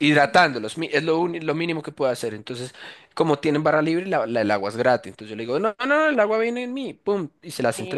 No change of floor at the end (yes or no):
yes